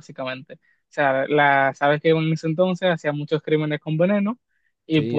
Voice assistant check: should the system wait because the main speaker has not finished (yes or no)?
yes